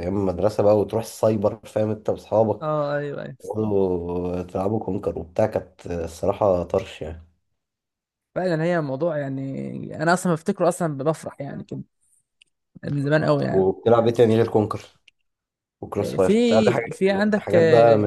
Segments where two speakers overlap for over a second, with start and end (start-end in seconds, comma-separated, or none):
16.0-17.6